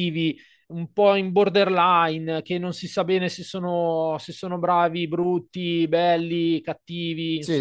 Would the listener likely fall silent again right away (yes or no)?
no